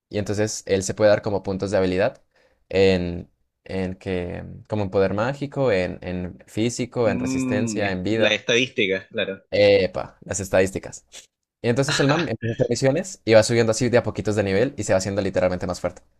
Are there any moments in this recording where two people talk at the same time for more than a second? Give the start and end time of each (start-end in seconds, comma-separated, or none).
7.0-8.4